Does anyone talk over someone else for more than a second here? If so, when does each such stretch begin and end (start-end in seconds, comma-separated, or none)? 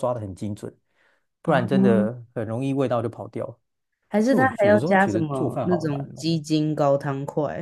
4.2-6.3